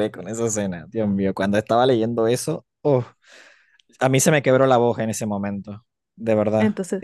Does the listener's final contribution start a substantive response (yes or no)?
yes